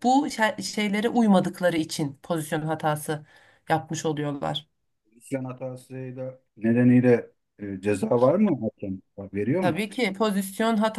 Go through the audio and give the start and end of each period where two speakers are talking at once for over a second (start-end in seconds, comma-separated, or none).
none